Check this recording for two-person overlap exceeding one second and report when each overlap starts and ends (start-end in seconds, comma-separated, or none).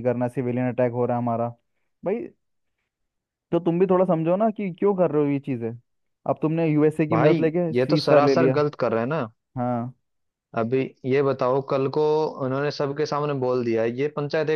7.1-8.6